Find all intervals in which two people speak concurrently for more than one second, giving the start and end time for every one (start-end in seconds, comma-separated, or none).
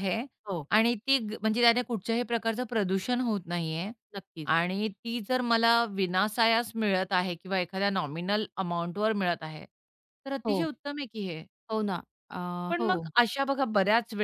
none